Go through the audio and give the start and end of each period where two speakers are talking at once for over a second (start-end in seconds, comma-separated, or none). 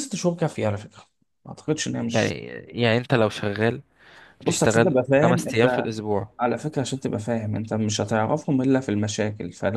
4.4-5.9